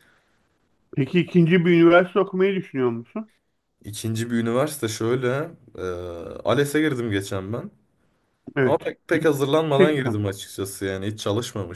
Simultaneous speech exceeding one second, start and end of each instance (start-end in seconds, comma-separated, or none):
8.6-10.2